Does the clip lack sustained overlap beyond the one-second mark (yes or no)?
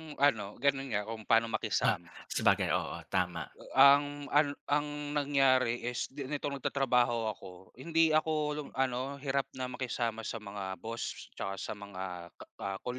yes